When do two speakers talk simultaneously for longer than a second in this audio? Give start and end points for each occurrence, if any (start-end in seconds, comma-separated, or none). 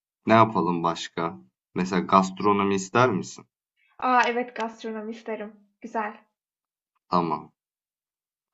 none